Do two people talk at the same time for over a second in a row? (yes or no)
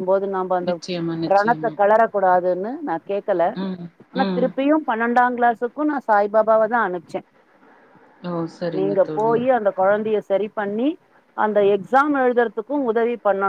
no